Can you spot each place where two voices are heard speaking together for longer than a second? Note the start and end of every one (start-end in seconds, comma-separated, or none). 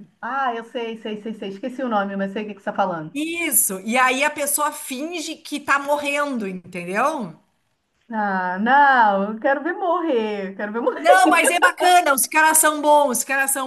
none